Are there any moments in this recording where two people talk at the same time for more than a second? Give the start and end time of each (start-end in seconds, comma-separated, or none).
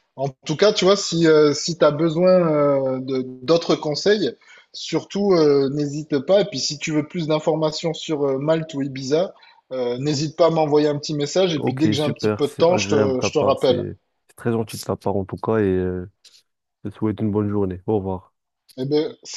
11.6-13.8